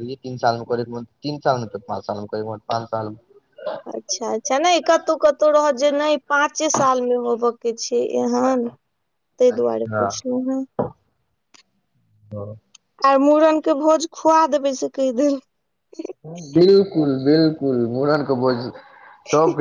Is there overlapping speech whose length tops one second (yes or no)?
no